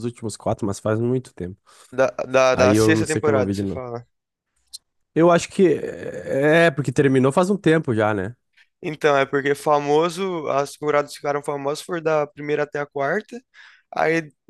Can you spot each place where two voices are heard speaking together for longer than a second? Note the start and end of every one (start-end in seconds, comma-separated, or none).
2.5-3.8